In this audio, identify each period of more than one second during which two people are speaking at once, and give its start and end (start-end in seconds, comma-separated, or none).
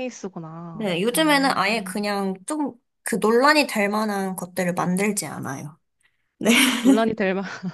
0.8-2.1